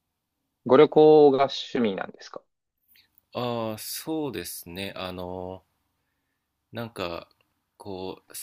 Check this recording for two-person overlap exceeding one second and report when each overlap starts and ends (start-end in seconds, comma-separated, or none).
none